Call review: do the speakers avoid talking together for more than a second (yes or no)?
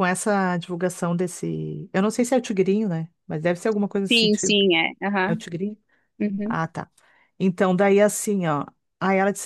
yes